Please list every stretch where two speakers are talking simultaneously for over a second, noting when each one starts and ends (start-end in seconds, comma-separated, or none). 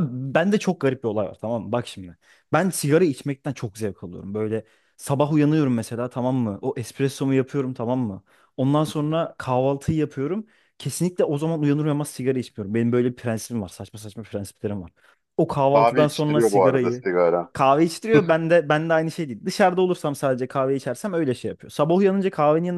15.7-17.0